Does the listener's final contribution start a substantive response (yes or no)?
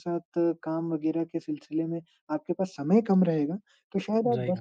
no